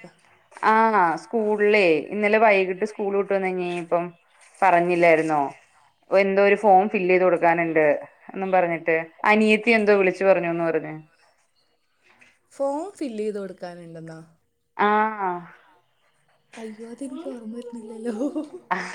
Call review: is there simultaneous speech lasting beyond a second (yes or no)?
no